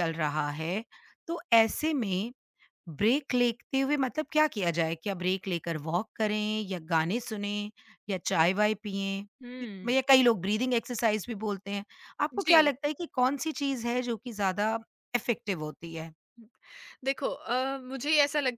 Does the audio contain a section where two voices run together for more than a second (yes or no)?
no